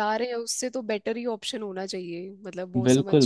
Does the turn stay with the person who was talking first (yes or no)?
no